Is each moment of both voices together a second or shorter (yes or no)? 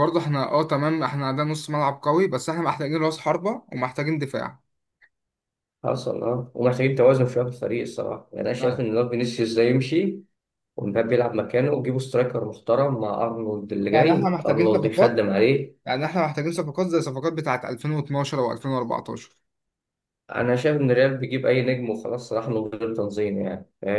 no